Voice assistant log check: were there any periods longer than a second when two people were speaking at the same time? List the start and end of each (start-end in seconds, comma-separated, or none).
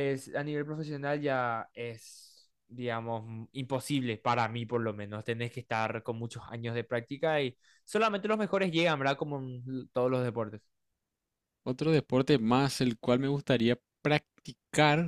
none